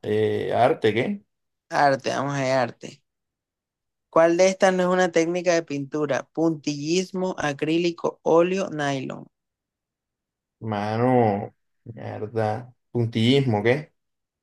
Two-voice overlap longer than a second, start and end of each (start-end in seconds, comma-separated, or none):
none